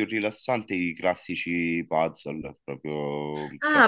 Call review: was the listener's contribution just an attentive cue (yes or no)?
no